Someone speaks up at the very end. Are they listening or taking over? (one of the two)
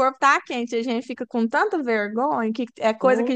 listening